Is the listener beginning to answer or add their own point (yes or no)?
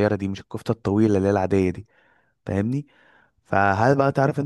no